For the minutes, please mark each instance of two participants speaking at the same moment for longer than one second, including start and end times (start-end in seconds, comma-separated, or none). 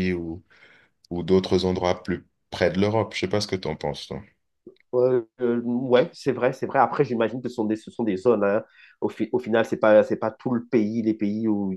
none